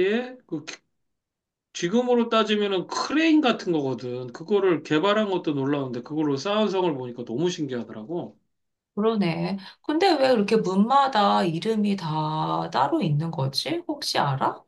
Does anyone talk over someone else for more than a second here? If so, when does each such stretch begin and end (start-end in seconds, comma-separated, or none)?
none